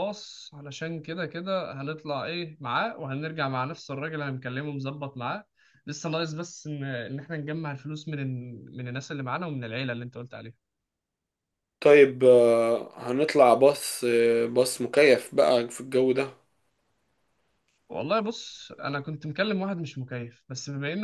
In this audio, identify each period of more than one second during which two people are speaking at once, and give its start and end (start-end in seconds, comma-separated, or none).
none